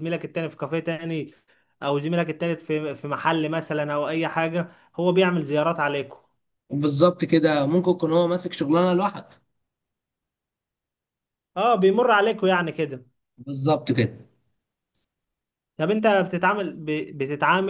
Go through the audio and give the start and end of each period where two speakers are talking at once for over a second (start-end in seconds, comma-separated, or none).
none